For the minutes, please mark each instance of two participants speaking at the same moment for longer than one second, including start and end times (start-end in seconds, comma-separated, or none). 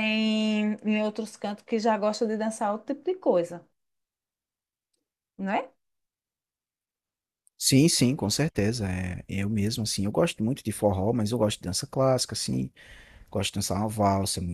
none